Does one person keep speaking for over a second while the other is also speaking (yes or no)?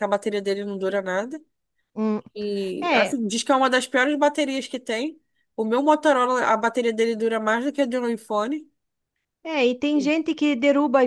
no